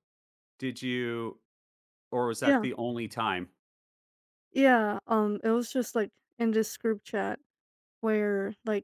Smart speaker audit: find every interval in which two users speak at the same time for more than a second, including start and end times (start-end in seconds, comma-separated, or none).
none